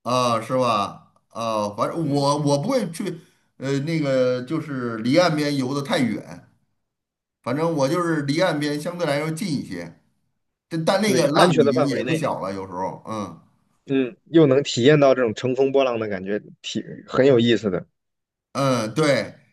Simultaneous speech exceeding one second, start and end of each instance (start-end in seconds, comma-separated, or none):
11.0-12.3